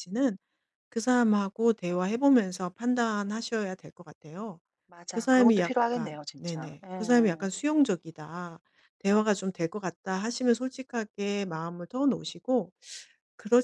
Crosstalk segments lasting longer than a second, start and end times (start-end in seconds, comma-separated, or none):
5.1-7.5